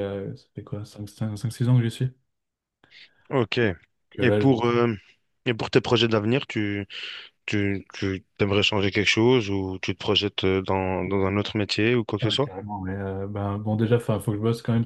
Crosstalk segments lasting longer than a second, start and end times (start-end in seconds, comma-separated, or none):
none